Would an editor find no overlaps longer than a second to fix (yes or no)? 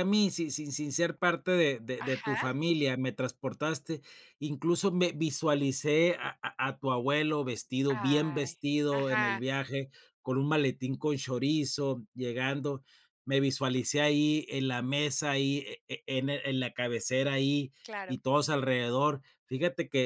no